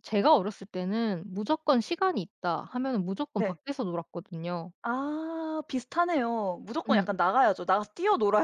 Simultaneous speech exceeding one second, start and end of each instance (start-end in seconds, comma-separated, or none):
none